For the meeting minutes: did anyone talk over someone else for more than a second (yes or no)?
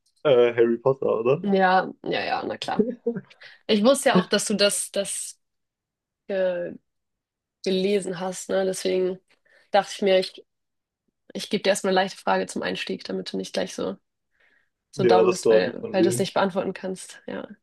yes